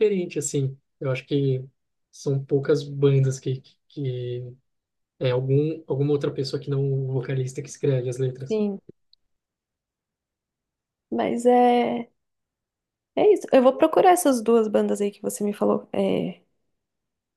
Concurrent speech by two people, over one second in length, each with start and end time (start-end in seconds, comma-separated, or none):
none